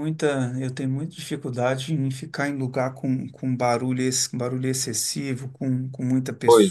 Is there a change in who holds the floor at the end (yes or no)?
no